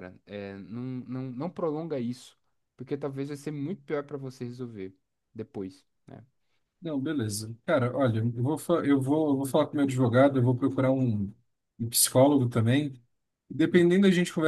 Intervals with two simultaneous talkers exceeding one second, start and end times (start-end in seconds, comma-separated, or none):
none